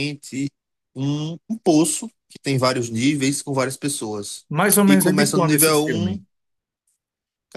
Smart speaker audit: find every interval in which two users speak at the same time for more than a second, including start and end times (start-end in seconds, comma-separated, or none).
4.9-6.2